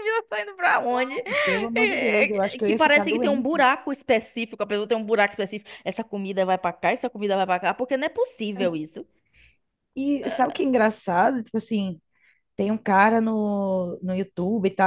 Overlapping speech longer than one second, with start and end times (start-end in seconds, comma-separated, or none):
1.8-3.6